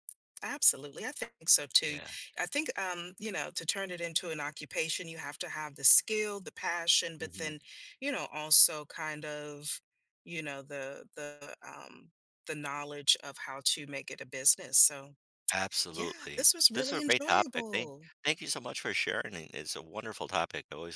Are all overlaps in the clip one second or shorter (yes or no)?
no